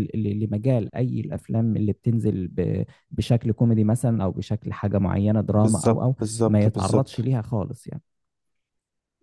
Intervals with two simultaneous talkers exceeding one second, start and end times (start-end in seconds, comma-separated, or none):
5.5-7.3